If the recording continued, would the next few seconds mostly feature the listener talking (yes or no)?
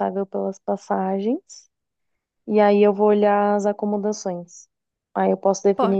no